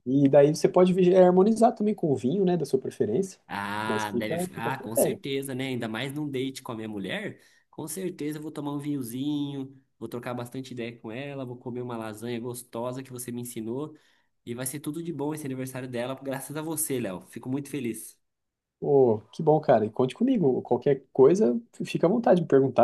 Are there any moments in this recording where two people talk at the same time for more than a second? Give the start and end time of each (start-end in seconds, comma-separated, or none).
3.8-5.2